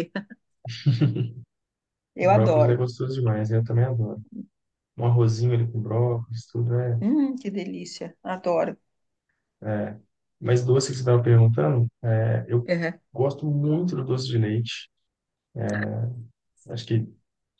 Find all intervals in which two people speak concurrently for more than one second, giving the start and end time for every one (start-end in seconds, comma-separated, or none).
none